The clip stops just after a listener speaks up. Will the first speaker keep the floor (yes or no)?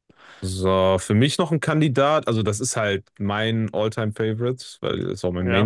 yes